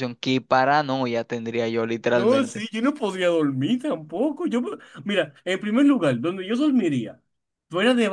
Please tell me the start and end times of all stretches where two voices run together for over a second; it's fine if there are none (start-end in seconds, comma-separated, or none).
none